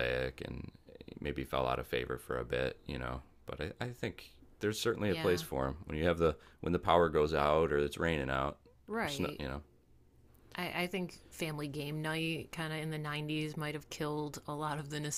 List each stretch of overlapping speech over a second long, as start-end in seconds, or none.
none